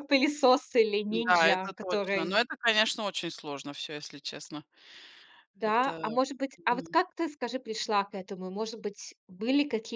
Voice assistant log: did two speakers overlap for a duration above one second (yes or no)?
yes